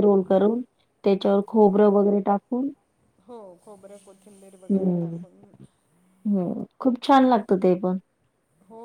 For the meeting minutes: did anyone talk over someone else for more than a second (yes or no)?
no